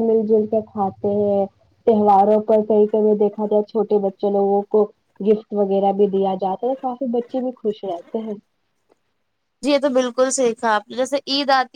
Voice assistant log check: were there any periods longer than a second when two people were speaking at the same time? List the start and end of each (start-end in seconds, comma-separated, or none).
none